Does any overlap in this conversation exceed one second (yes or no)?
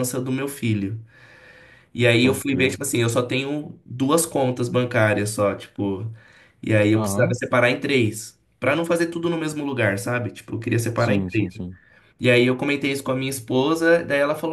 no